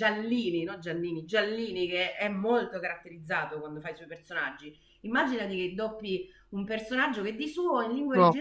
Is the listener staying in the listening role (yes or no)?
yes